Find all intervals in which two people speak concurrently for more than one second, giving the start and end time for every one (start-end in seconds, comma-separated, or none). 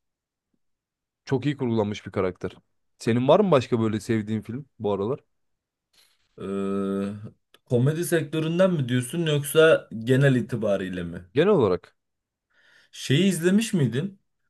none